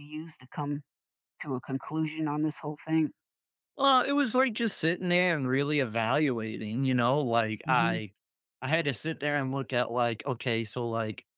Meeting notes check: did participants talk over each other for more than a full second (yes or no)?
no